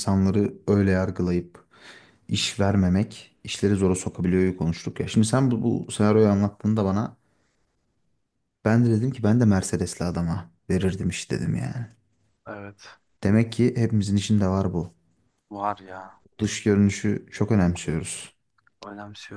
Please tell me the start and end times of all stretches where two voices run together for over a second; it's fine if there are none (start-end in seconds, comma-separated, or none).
none